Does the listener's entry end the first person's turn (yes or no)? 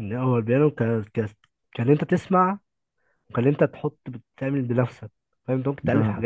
no